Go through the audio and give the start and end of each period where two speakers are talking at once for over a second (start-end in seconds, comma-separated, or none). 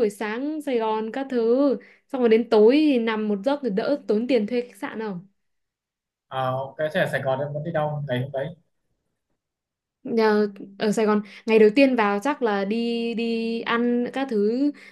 none